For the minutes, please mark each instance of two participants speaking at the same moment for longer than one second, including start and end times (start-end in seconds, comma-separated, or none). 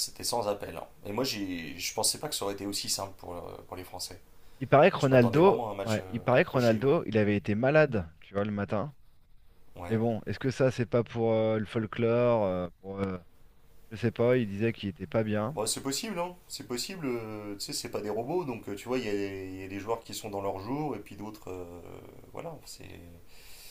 5.0-6.9